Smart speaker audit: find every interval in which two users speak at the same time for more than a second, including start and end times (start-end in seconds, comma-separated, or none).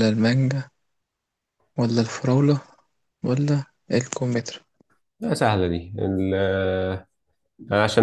none